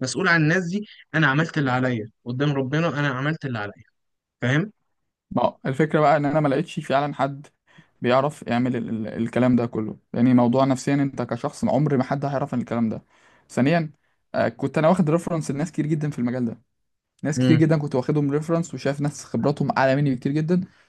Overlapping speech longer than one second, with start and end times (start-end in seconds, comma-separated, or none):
none